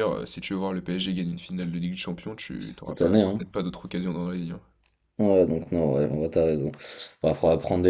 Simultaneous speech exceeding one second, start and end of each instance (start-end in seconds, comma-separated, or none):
none